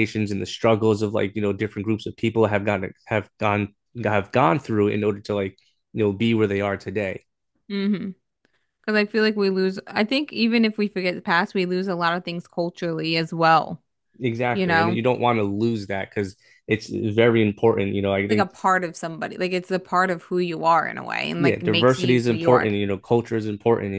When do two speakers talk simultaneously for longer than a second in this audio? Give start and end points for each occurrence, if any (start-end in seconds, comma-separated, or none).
21.4-22.7